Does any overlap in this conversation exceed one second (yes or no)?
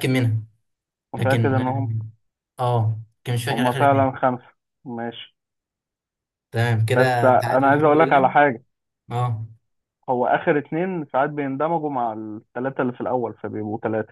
yes